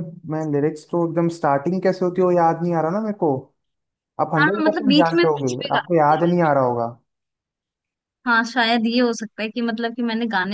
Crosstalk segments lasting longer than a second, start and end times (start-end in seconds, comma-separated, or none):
4.4-6.3